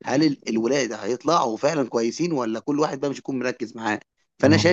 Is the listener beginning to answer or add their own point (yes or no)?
no